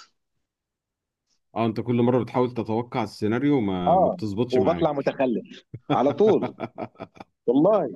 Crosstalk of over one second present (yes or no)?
yes